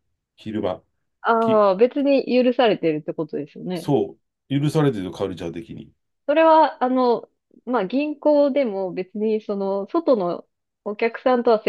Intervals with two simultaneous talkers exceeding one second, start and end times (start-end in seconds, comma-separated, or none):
none